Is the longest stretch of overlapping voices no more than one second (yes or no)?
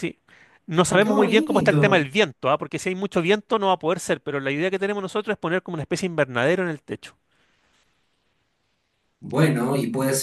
no